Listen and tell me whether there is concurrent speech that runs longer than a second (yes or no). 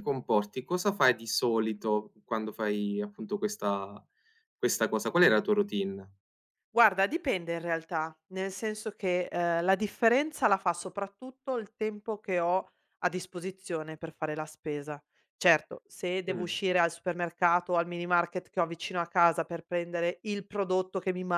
no